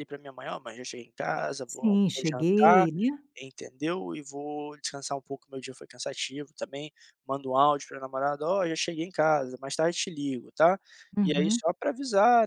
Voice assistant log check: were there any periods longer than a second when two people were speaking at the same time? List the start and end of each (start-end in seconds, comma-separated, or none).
1.7-2.9